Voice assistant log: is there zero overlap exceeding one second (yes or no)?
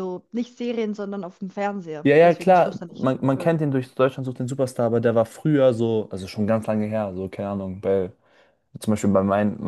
no